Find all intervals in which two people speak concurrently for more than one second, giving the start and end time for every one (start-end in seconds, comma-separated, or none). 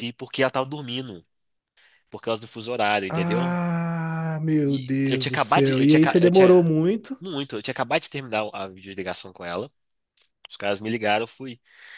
4.7-6.7